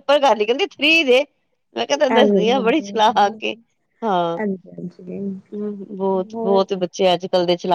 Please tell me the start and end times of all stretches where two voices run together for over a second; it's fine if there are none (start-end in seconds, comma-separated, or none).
2.1-3.5